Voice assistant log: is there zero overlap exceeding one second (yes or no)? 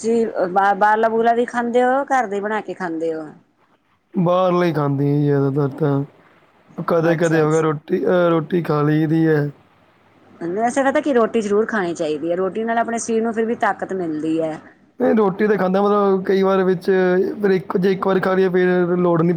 yes